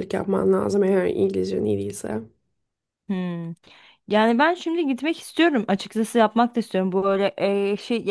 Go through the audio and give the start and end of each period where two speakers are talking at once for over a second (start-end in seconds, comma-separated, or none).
none